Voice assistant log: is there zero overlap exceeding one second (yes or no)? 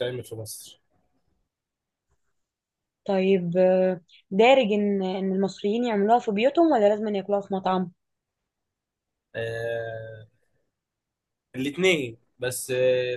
yes